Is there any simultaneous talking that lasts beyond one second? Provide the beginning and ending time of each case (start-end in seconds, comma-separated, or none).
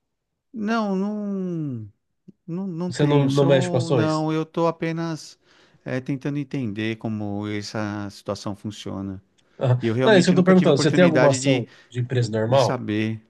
2.9-4.2, 9.8-11.7